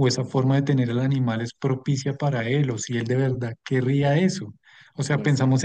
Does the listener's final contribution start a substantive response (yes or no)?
no